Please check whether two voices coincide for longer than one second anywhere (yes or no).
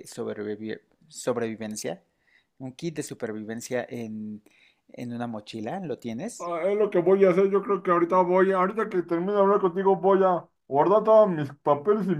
no